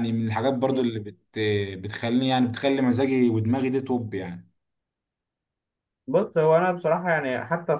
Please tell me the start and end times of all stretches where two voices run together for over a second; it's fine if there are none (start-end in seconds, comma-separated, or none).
none